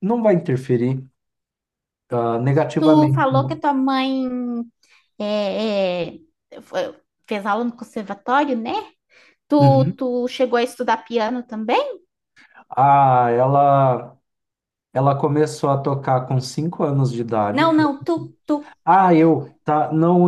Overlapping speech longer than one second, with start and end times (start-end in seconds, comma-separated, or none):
none